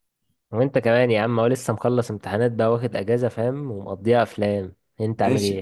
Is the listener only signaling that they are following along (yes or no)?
no